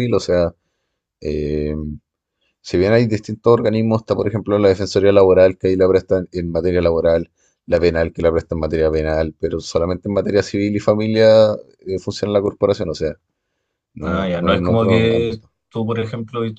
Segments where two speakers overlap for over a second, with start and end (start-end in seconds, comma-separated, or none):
14.0-15.5